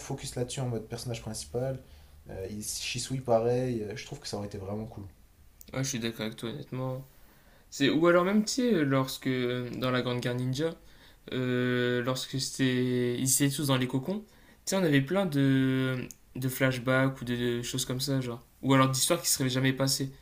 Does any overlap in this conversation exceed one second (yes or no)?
no